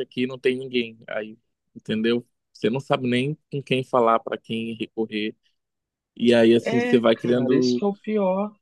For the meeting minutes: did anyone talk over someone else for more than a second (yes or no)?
yes